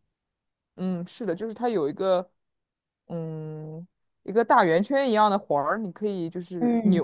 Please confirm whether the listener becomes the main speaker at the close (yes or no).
yes